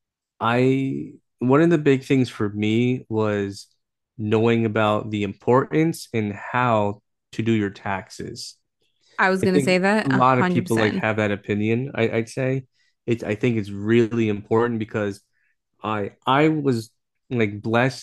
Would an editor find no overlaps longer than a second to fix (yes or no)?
no